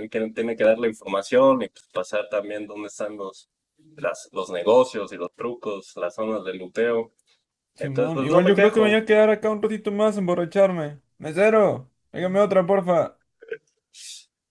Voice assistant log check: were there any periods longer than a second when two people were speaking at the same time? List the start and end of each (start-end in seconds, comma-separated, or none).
7.8-9.0